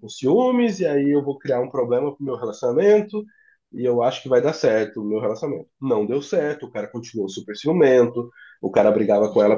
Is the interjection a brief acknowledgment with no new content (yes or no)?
yes